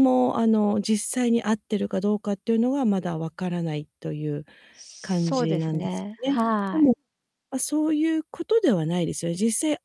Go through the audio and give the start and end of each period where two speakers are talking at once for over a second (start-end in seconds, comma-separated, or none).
5.0-6.9